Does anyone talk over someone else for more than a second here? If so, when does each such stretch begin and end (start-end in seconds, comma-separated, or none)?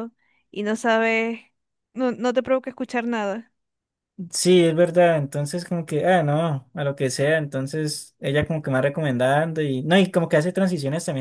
none